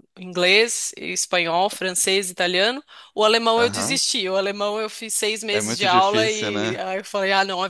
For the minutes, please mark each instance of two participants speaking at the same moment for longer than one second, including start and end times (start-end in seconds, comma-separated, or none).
5.5-6.8